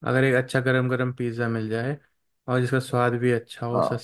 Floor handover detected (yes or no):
no